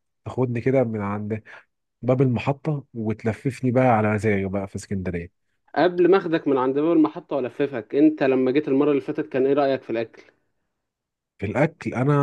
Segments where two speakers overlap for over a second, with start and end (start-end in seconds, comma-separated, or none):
none